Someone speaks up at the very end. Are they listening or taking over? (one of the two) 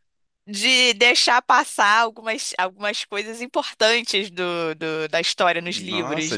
taking over